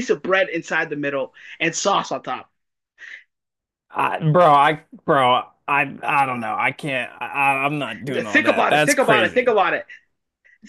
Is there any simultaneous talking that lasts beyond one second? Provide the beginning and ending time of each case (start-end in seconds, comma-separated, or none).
8.2-9.5